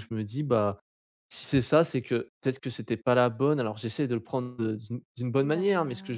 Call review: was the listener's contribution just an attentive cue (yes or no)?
yes